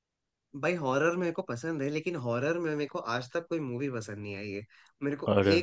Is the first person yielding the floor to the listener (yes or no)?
no